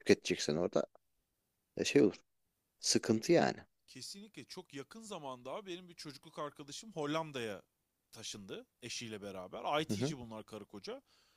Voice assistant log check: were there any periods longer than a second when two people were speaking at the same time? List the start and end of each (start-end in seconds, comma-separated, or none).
none